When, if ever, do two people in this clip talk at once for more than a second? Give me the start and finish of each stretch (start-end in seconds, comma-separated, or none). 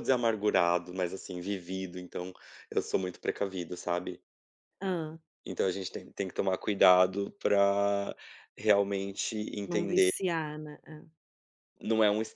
none